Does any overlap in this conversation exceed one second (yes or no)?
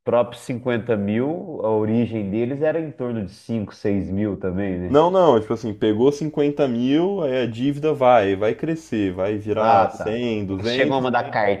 yes